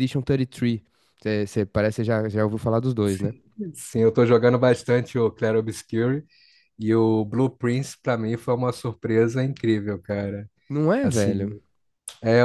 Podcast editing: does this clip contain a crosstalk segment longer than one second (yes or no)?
no